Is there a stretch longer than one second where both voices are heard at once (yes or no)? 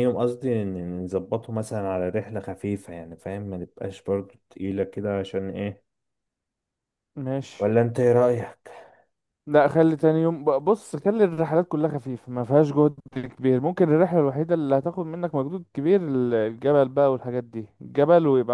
no